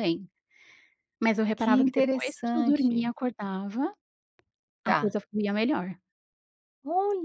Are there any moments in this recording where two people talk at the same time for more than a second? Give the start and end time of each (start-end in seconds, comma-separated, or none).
1.6-3.1